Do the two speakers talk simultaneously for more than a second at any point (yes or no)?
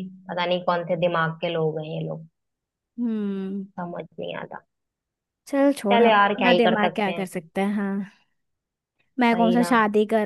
yes